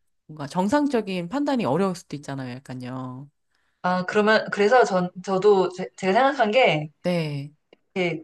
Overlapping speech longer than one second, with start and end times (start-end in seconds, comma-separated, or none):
none